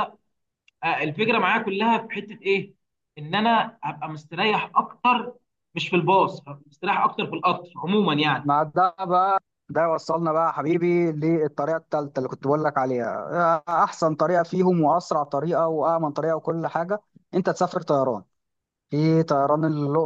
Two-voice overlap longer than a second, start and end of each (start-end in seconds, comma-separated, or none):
none